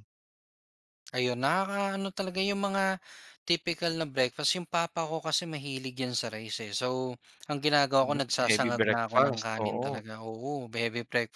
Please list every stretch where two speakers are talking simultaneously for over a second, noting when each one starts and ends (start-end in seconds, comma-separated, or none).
8.0-10.0